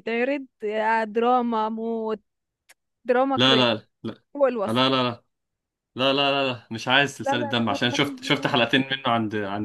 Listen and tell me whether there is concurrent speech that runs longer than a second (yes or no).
yes